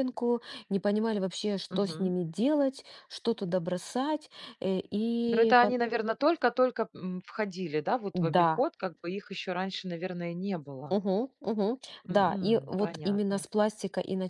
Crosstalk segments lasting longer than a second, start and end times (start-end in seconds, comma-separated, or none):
12.1-13.4